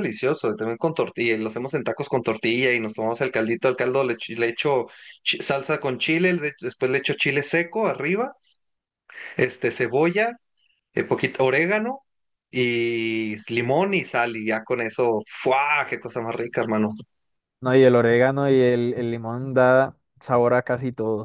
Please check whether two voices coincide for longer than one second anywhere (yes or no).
no